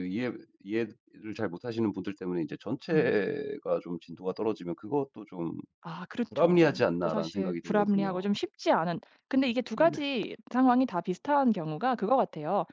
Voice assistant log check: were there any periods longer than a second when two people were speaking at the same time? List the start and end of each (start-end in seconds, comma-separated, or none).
6.3-8.3